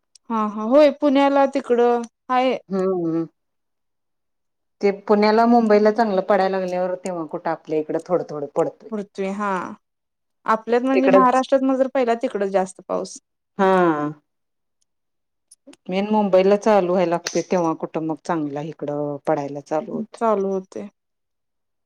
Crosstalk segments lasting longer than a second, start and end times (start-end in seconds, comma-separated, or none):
none